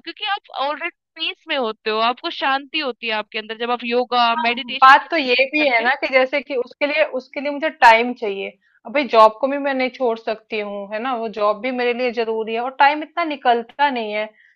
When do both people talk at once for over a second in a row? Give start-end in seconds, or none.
4.3-5.9